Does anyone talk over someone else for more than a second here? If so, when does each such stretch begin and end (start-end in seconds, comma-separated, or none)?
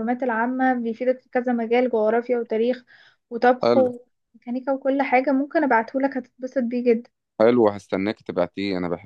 none